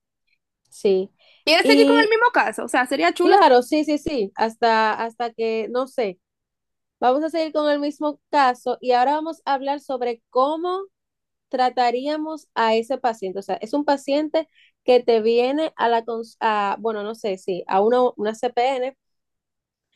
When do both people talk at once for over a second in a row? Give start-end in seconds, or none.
none